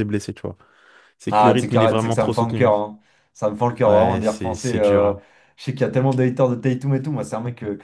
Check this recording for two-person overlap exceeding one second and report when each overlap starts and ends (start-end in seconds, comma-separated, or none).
1.3-2.7, 3.9-5.1